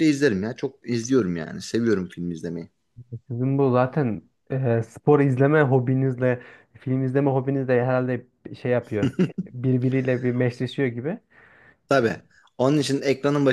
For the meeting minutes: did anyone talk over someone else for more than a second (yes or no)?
no